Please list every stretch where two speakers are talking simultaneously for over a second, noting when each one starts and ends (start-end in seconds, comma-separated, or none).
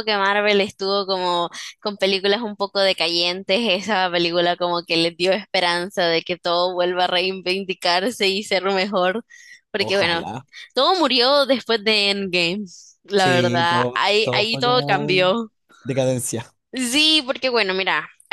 13.2-15.2